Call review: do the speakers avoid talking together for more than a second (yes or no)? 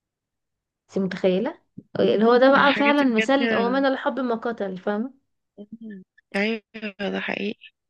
no